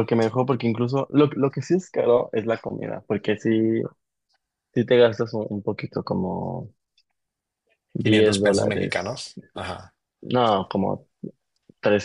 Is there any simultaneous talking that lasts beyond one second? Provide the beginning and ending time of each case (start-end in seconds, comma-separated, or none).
8.0-9.3